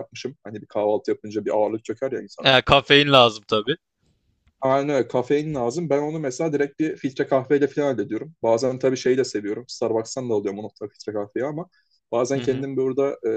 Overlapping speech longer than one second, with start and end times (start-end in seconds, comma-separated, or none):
none